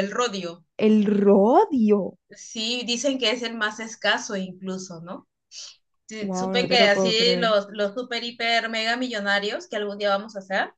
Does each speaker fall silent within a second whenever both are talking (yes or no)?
no